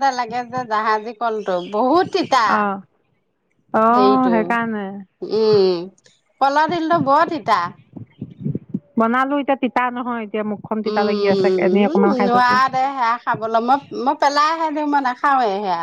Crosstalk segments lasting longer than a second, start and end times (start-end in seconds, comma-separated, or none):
10.9-12.6